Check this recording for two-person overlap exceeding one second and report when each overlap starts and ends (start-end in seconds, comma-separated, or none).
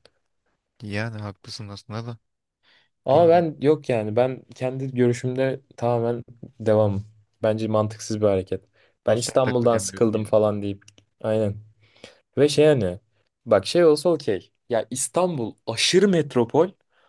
9.1-10.3